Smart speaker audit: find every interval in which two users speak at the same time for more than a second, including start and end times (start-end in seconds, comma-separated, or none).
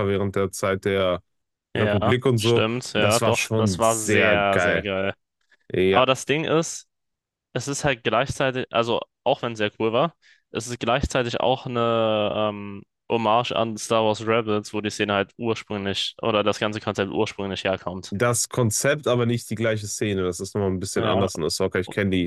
1.8-4.9